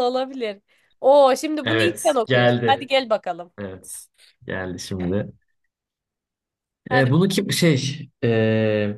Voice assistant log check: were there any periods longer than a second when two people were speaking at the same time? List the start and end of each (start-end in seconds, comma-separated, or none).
1.6-2.9